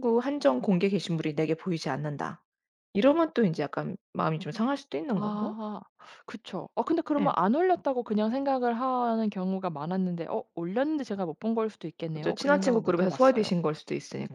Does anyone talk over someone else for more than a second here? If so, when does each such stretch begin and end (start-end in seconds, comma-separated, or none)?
12.1-13.5